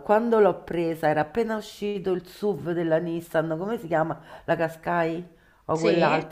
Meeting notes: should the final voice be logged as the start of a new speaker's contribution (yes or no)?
no